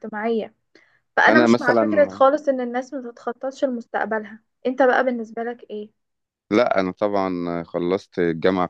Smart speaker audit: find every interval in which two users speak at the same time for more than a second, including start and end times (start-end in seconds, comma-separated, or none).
none